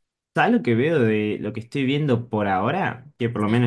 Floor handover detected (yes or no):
no